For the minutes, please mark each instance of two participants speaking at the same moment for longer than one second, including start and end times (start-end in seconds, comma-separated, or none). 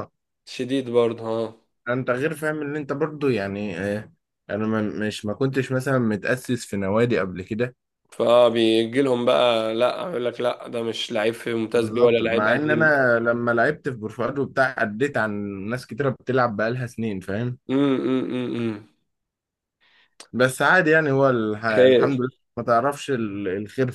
11.7-12.9